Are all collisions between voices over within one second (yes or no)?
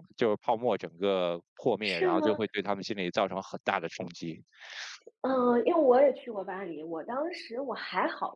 yes